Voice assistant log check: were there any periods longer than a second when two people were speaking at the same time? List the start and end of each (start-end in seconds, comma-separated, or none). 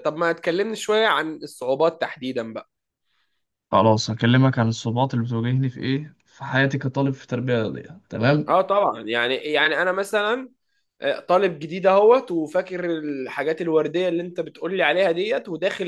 none